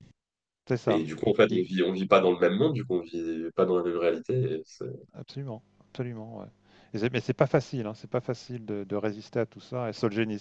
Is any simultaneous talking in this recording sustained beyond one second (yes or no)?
no